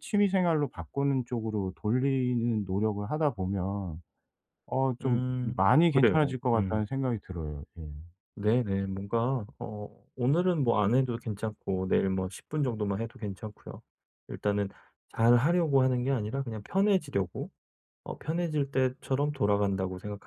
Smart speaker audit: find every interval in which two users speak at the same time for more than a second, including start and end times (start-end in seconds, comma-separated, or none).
5.0-6.8